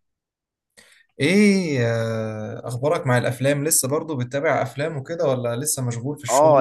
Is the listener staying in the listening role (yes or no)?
no